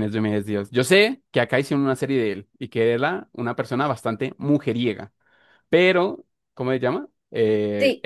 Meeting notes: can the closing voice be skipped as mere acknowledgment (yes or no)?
yes